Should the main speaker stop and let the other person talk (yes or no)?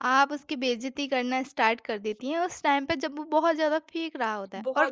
no